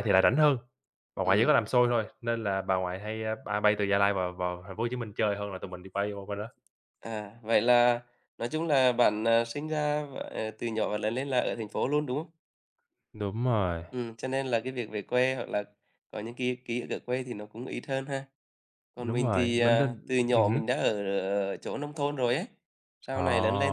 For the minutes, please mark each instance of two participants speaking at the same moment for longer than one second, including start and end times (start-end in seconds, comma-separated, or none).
19.0-20.6